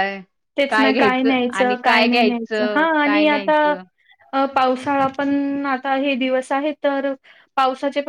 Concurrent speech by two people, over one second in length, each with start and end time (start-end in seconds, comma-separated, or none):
0.7-3.5